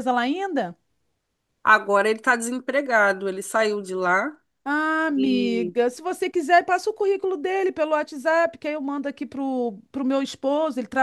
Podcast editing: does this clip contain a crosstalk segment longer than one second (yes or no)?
no